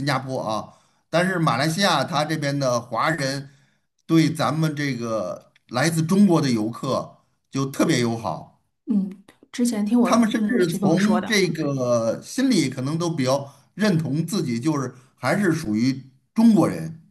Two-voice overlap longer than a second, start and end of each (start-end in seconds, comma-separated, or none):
10.0-11.4